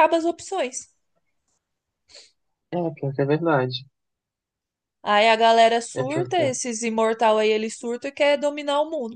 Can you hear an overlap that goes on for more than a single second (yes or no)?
no